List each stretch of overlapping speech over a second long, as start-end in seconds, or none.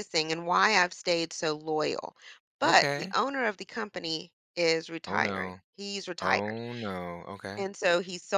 none